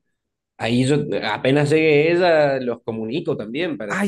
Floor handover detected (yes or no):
yes